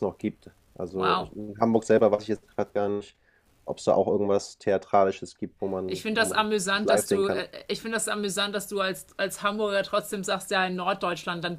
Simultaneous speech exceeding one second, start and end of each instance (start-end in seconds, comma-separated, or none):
5.9-7.4